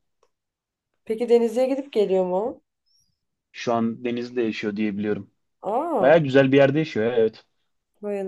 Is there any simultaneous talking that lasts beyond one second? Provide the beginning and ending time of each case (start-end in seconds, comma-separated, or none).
none